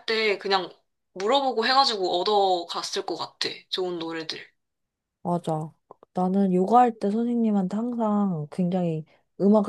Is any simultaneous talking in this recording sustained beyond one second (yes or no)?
no